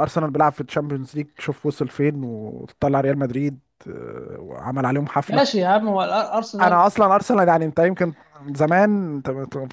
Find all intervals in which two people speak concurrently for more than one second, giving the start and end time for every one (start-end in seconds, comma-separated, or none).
none